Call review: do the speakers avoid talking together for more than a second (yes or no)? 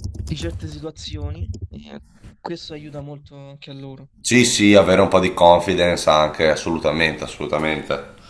yes